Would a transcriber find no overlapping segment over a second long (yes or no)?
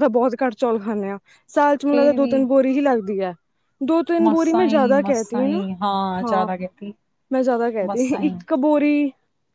no